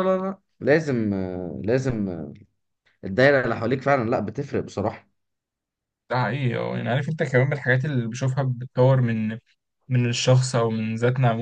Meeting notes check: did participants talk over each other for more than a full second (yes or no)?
no